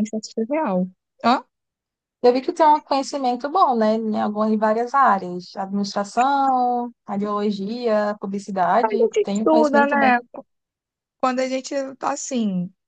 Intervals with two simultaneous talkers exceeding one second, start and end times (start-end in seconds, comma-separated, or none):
8.8-10.1